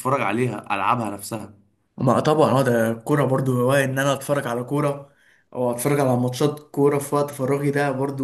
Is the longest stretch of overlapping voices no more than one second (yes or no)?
yes